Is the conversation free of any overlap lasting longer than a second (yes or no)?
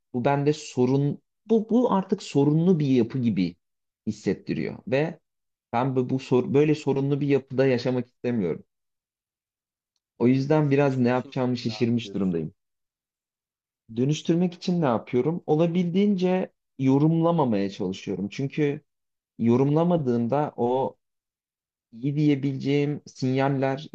no